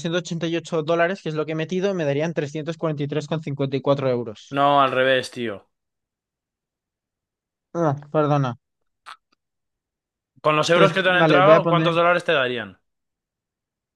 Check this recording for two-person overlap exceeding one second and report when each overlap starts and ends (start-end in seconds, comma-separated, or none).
10.7-11.9